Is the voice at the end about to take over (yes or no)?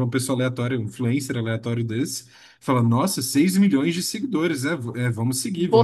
no